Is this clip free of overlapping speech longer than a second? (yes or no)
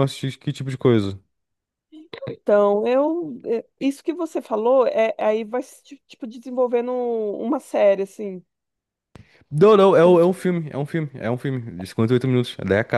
yes